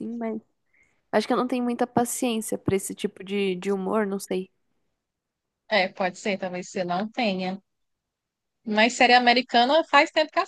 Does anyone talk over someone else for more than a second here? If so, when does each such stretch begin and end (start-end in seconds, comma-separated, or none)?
none